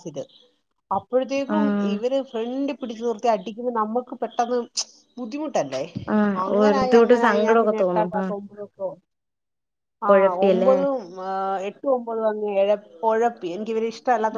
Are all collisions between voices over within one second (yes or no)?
no